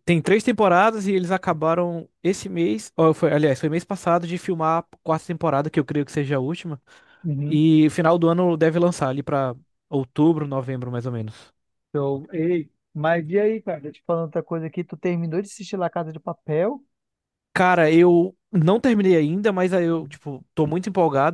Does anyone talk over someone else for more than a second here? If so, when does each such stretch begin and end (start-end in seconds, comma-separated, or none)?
none